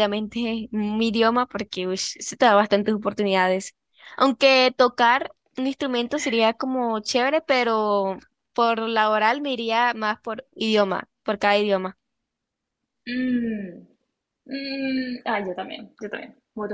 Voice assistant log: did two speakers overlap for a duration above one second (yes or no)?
no